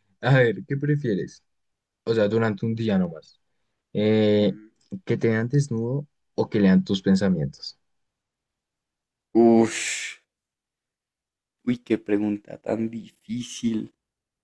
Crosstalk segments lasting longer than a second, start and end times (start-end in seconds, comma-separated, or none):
none